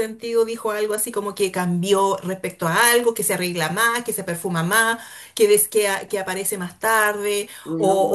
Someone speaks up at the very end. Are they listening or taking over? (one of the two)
listening